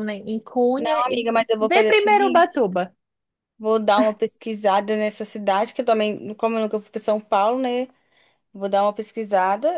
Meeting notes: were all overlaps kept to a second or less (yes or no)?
no